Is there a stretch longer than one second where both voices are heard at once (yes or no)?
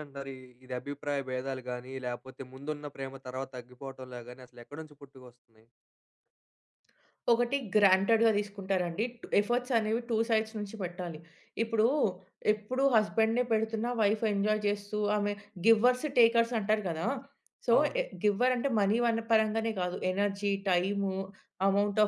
no